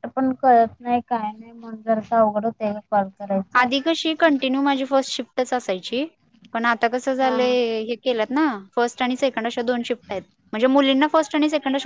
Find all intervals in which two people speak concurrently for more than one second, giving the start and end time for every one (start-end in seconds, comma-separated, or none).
none